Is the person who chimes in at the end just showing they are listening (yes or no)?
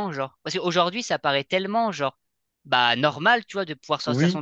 yes